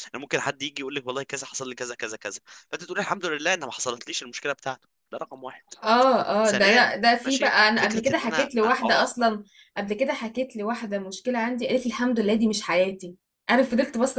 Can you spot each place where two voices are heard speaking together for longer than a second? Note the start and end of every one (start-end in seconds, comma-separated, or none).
6.4-9.3